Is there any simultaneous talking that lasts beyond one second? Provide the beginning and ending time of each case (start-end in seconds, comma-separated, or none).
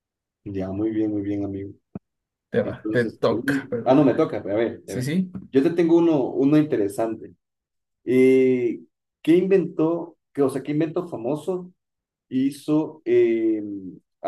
2.6-4.0